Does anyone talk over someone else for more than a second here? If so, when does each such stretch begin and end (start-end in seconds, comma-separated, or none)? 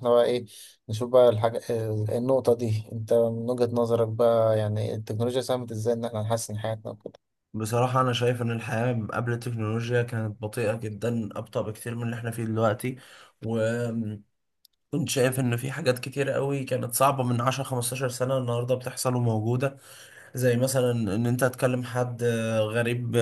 none